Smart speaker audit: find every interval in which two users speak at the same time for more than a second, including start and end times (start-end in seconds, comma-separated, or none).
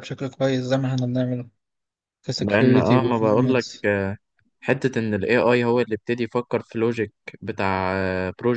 2.4-3.6